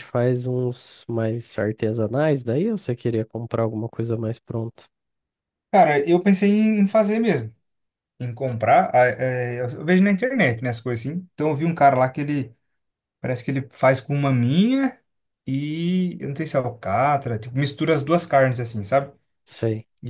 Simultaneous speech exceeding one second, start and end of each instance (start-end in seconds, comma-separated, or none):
none